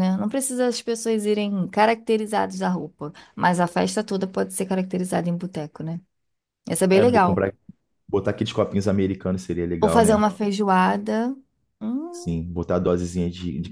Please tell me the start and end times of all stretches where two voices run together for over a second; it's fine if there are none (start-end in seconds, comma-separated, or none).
none